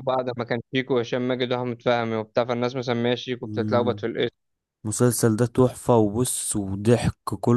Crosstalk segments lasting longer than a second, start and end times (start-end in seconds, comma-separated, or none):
none